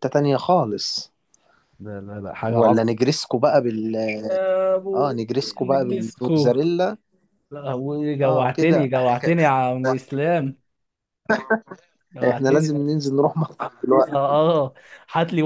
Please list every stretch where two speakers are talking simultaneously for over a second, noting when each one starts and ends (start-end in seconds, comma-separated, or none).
4.9-6.5, 8.2-9.5